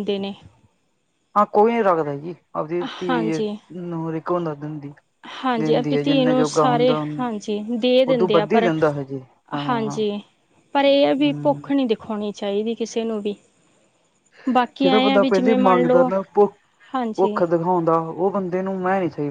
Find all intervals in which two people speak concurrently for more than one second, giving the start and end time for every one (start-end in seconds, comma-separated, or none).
14.8-16.1